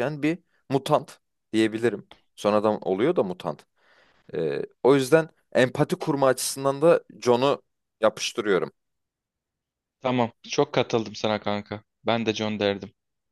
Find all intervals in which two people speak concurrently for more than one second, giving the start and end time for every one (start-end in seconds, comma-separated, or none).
none